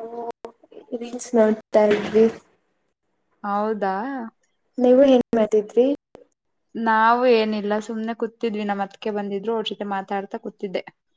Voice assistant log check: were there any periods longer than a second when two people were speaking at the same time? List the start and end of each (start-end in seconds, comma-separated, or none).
none